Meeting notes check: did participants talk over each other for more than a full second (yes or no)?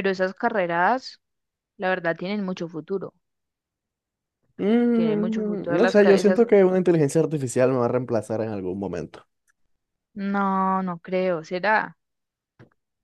yes